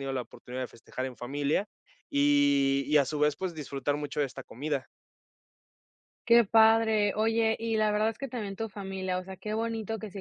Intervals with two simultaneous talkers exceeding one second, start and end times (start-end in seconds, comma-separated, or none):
none